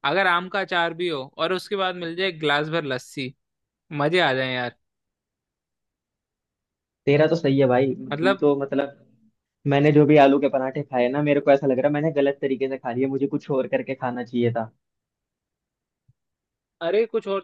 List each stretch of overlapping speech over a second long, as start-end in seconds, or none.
none